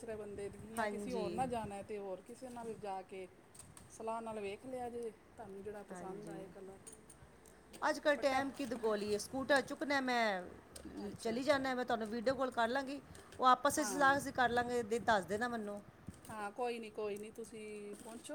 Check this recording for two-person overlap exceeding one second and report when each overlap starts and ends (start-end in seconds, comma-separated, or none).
none